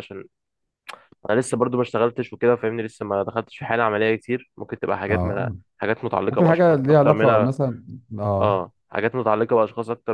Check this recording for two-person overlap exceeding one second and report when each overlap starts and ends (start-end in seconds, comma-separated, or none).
6.3-7.5